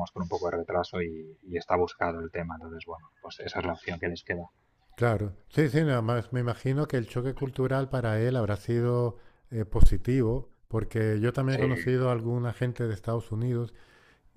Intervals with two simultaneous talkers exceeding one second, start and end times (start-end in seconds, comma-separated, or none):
none